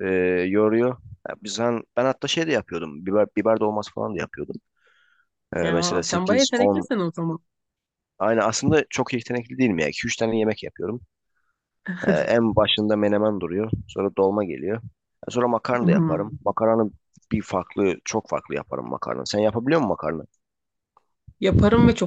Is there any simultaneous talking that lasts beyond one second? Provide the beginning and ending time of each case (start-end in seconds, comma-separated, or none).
5.6-6.9